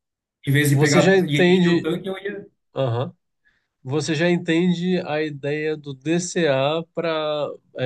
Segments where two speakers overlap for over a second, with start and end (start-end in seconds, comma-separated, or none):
0.7-1.9